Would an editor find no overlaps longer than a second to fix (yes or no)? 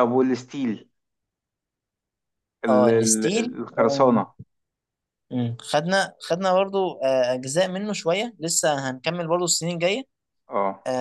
no